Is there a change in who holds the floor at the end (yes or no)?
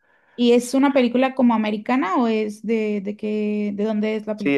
yes